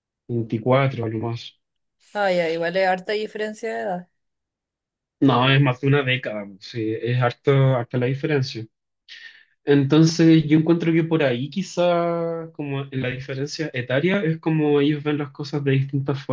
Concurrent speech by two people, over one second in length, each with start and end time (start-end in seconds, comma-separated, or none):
none